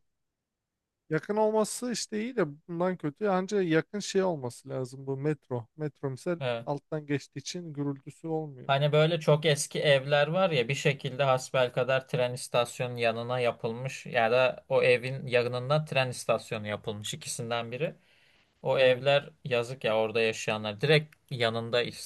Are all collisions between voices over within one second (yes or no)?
yes